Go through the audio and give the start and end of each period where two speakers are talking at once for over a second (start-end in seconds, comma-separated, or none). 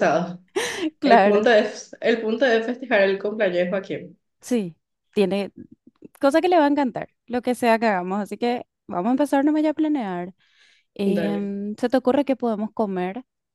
none